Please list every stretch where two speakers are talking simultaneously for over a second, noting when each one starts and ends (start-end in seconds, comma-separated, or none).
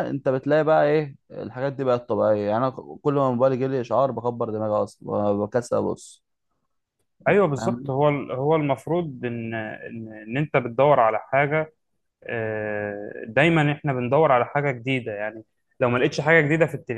none